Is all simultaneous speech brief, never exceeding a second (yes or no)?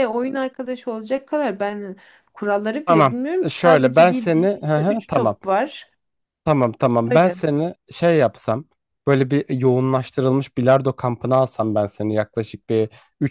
no